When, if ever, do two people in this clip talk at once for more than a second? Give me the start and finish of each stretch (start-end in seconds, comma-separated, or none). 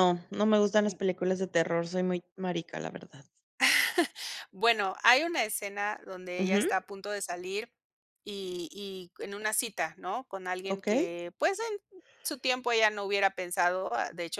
none